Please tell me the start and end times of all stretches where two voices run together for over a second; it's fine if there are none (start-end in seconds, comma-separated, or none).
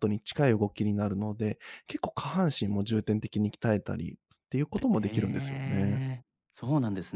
4.7-6.0